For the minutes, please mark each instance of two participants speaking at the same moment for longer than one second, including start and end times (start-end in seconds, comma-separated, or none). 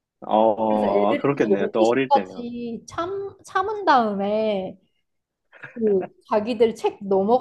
0.7-2.5